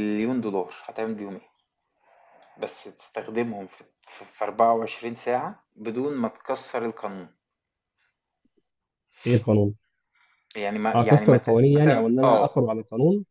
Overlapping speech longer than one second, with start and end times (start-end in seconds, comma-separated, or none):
10.9-12.6